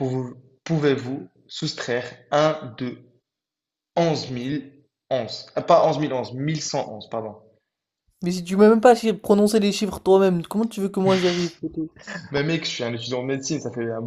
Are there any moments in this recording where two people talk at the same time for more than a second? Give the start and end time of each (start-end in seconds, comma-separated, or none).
none